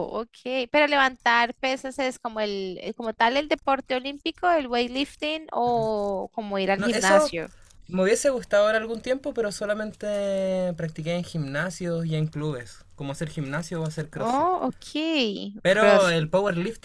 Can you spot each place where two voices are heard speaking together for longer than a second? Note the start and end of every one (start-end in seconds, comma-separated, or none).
none